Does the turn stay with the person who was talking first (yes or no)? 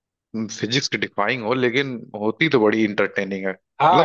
no